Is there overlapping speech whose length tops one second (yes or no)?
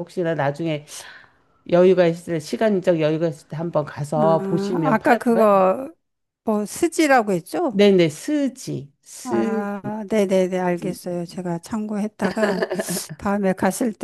yes